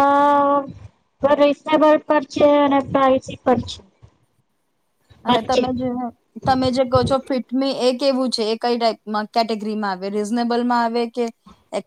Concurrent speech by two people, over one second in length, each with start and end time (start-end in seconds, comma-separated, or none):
none